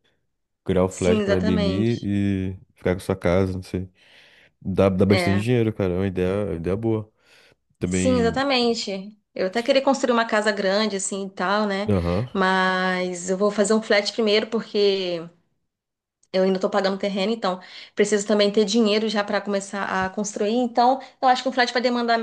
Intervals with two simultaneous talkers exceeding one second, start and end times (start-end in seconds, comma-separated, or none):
0.9-2.1